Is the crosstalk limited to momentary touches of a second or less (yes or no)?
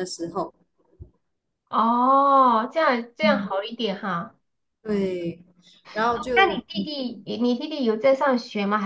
yes